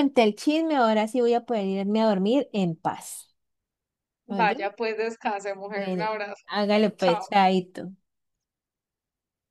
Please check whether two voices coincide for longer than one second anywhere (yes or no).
no